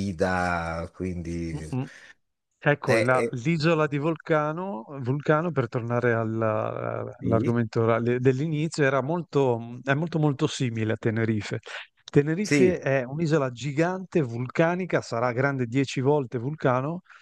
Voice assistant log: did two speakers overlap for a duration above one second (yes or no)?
no